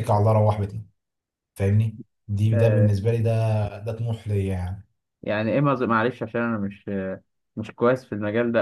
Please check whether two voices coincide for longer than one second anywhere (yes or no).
no